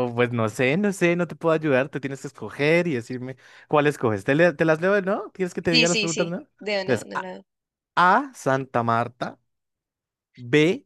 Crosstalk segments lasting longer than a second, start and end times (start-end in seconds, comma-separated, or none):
5.7-7.3